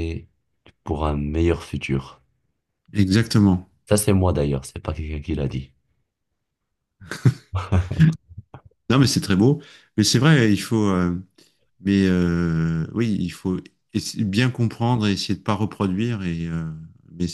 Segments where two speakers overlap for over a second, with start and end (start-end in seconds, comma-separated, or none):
none